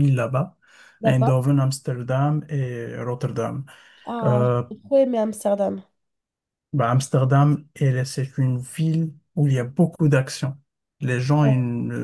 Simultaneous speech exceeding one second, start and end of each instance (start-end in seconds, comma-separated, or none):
none